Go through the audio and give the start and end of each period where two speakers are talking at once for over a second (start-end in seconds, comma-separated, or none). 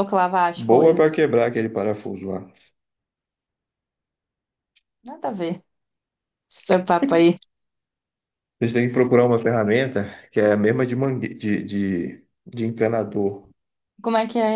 none